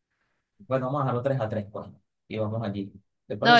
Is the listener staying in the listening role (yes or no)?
no